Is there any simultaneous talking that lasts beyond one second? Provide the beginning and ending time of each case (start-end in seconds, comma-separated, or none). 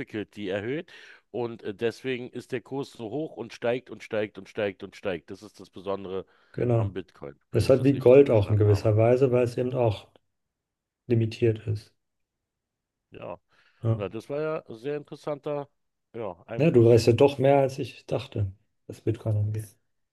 7.5-8.9